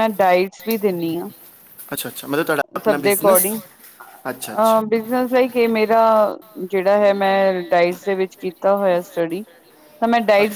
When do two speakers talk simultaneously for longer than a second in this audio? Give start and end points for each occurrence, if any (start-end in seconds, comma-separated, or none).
none